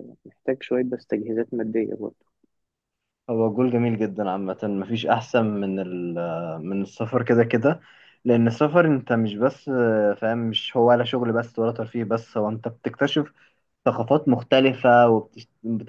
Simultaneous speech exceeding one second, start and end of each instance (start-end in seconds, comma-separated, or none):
none